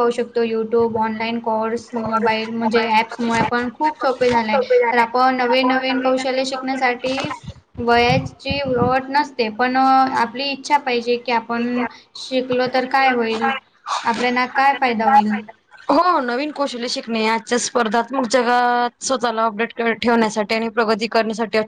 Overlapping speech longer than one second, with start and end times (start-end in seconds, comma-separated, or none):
none